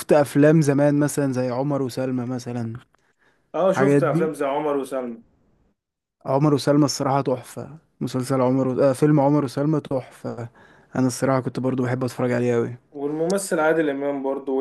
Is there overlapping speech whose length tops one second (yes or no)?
no